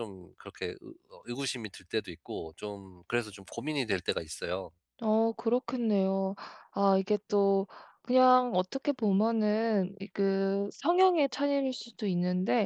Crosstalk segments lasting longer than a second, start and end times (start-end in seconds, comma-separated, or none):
none